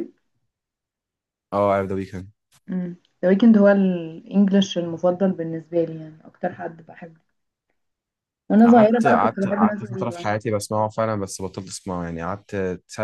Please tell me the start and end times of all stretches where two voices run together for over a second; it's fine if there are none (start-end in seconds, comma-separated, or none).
8.6-10.3